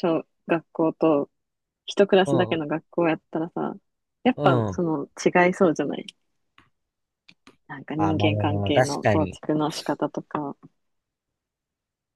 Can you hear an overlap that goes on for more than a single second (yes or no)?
yes